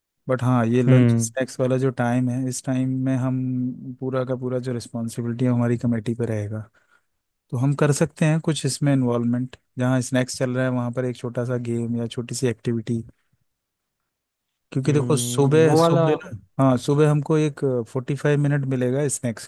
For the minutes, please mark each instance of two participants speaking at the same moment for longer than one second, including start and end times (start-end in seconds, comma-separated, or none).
14.8-16.3